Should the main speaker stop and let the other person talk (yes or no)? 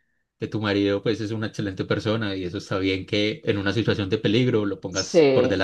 yes